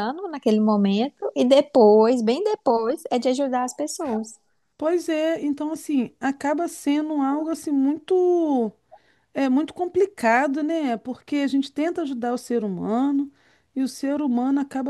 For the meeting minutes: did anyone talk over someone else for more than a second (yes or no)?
no